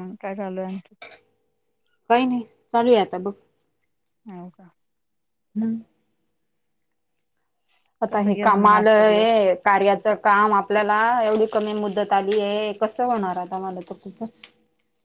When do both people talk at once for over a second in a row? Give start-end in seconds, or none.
8.1-9.3